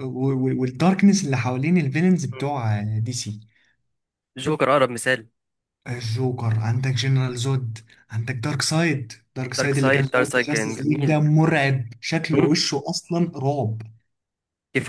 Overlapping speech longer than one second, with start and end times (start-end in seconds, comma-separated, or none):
9.6-11.2